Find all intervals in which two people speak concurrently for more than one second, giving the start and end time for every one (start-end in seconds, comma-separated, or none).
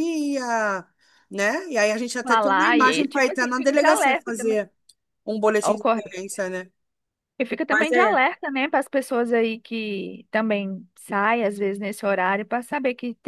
2.2-4.6